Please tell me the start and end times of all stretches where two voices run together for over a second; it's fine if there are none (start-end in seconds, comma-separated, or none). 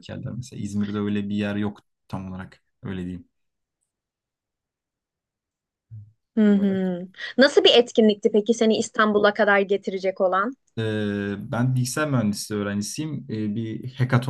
none